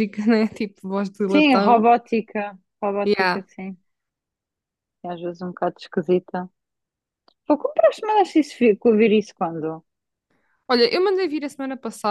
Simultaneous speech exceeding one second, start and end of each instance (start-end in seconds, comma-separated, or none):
none